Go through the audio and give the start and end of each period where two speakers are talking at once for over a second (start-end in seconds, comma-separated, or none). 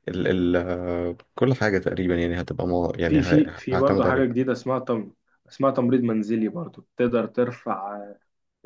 3.1-4.5